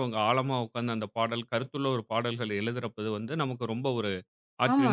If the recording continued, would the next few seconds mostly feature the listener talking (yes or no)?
yes